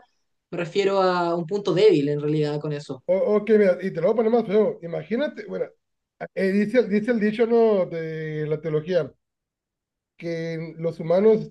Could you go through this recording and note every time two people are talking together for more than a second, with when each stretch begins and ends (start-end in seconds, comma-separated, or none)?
none